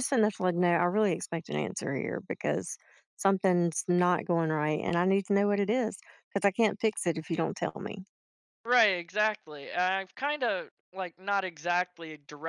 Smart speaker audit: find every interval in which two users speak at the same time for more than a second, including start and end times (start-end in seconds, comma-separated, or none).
none